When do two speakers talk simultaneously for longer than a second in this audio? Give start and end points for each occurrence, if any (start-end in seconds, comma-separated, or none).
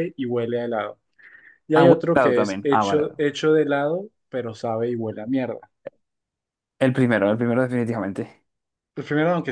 1.7-3.2